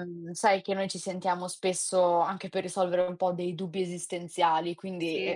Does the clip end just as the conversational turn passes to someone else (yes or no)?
no